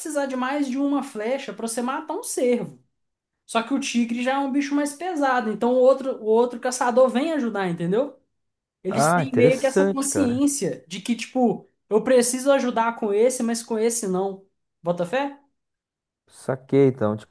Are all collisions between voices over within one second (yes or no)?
no